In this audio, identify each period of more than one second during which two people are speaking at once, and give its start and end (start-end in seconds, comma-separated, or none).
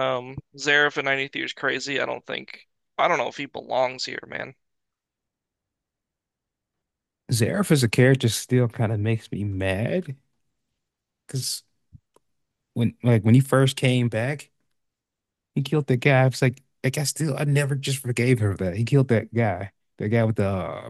none